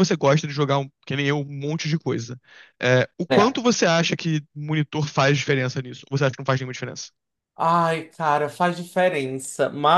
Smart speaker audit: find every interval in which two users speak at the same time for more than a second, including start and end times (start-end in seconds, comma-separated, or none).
none